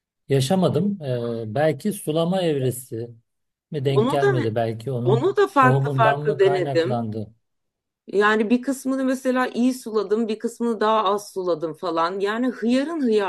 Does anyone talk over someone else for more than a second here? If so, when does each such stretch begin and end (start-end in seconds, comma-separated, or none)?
5.0-7.0